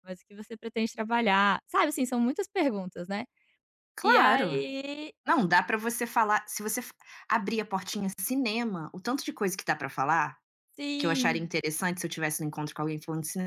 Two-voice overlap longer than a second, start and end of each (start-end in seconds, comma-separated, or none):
none